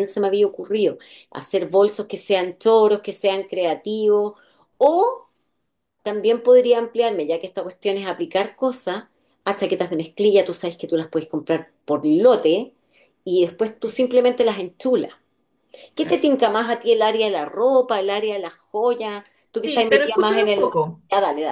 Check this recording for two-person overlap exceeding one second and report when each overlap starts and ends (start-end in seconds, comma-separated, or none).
19.6-21.0